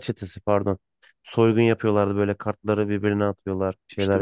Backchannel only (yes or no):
no